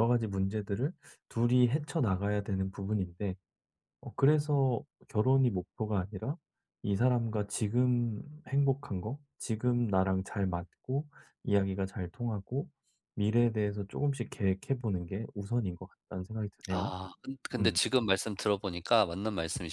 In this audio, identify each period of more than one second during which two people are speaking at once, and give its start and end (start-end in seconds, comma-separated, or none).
none